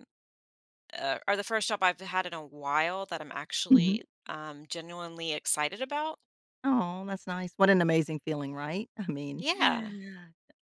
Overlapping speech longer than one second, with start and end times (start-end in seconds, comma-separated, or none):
none